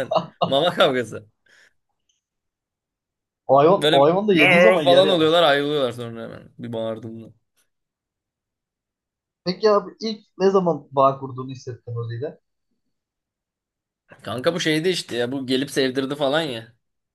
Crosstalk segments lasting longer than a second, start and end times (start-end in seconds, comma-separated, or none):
3.8-5.4